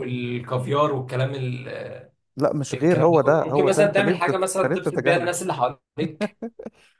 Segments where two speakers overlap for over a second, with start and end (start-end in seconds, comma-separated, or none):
2.7-5.3